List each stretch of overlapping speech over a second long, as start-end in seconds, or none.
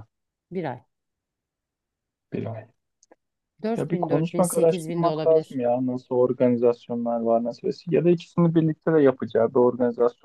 3.8-5.6